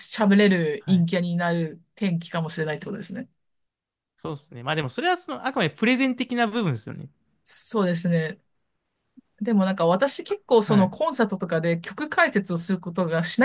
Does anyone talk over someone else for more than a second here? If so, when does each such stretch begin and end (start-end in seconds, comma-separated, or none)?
none